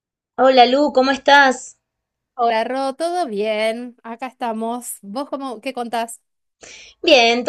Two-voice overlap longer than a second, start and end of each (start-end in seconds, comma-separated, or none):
none